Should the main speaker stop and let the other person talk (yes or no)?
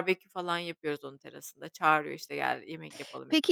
yes